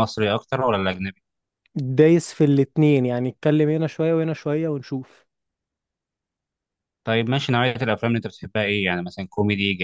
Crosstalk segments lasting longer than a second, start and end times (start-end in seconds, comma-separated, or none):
none